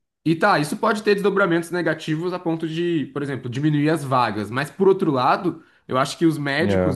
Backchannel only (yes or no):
yes